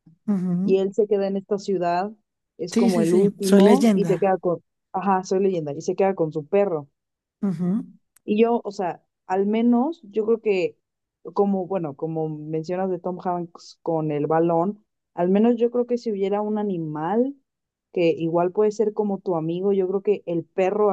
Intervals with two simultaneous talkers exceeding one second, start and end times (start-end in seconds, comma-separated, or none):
2.7-4.4